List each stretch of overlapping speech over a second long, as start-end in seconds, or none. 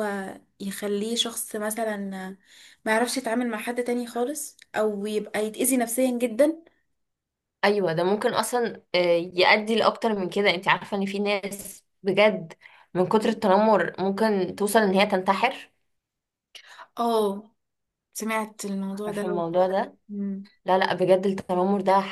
none